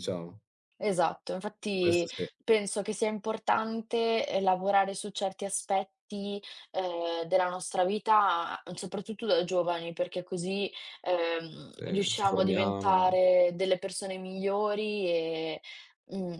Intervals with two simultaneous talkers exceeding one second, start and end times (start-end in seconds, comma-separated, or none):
11.7-13.2